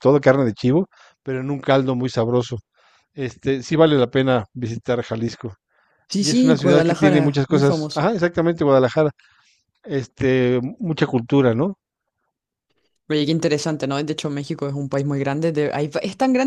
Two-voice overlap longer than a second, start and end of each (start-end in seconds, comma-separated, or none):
6.2-8.1